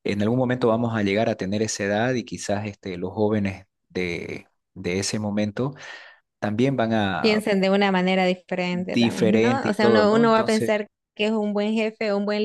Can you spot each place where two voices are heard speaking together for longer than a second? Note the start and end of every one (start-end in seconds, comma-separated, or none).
8.9-10.8